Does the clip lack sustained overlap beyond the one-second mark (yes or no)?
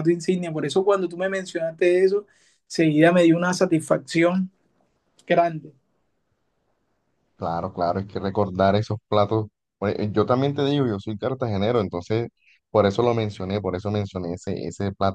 yes